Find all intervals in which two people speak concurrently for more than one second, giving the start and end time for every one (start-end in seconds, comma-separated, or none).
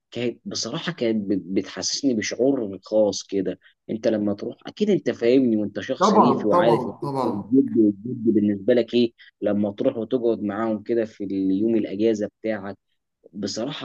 6.0-7.5